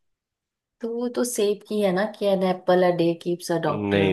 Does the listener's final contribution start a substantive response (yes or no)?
yes